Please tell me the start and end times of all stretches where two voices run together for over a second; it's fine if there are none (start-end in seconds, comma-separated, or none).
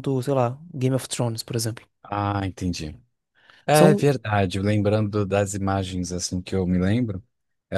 none